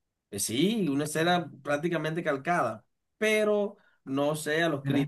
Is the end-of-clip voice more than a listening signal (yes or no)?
no